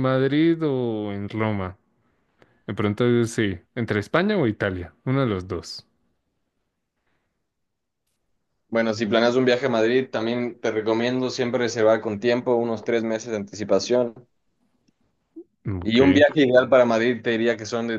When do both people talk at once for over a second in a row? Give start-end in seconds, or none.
none